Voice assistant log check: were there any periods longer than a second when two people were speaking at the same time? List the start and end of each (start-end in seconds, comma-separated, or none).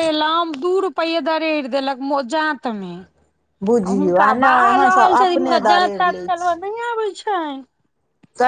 3.9-6.5